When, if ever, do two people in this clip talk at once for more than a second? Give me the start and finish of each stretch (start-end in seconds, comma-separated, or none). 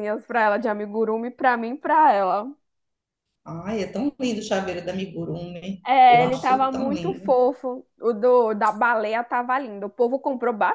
5.9-7.3